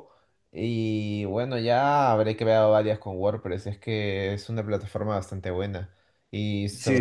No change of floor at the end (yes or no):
yes